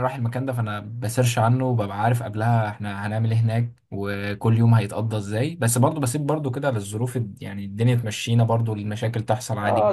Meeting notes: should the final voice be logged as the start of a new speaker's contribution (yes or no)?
yes